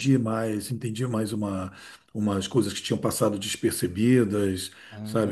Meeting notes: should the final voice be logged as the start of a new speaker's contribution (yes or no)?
no